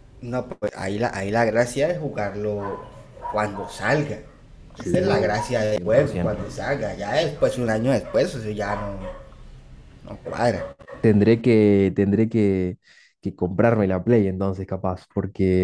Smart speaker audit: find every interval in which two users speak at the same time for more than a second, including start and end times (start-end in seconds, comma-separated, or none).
4.8-6.4